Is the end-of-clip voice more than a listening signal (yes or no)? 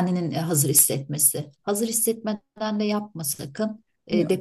no